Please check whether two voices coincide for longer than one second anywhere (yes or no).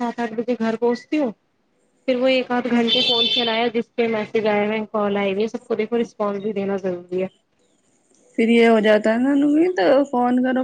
no